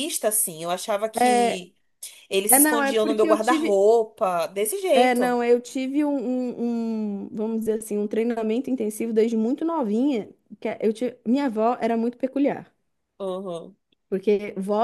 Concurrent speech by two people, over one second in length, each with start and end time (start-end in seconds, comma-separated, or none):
2.5-3.8